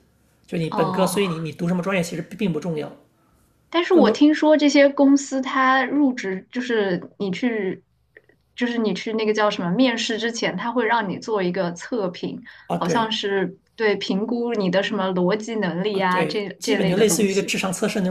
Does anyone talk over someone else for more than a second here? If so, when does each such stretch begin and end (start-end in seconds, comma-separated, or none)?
15.9-17.6